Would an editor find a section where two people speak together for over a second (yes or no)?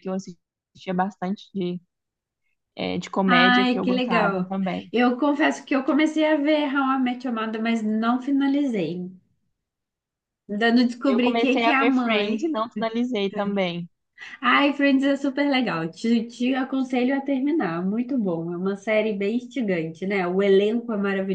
yes